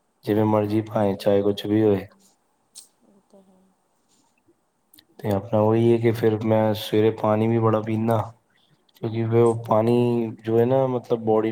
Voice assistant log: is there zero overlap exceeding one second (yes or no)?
no